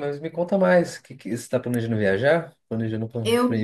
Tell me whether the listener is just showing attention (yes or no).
no